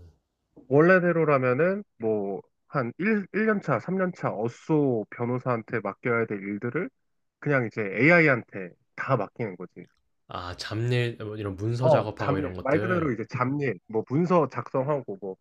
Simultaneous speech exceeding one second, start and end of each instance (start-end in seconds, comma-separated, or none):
11.8-13.1